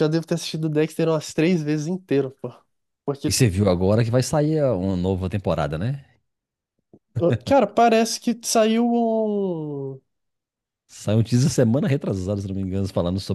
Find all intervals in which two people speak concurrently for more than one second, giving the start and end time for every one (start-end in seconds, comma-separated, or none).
none